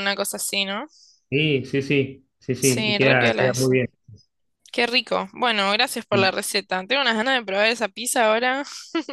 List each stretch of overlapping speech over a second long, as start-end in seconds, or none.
2.6-3.8